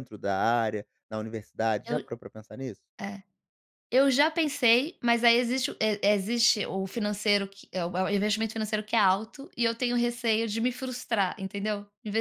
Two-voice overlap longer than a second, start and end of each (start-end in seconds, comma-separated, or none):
none